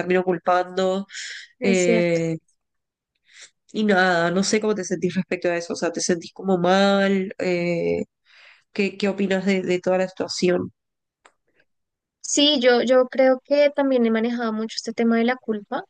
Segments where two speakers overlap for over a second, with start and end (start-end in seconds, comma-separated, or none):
none